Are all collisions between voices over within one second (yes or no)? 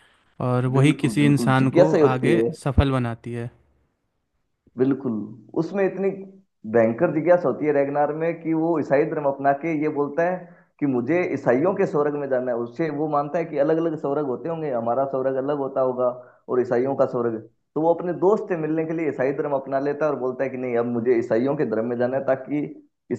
no